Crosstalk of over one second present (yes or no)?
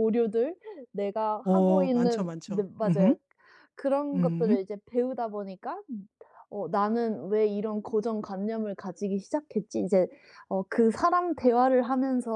yes